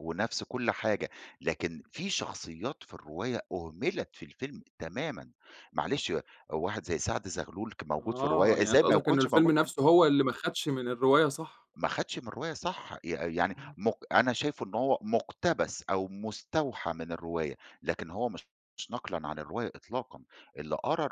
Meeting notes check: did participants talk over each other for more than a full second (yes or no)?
yes